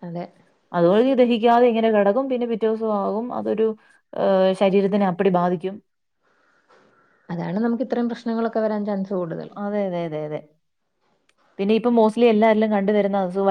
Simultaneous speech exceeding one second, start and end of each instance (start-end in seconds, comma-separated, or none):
none